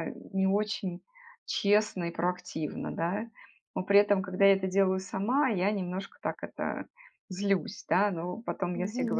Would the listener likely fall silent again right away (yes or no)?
yes